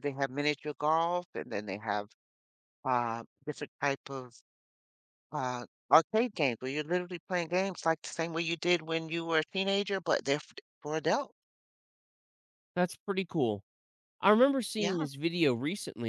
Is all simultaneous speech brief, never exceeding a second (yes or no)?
yes